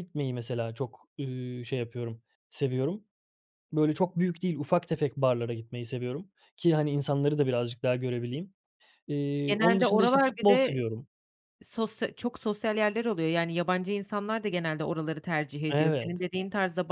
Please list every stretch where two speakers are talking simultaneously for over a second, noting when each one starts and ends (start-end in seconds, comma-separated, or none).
9.5-10.8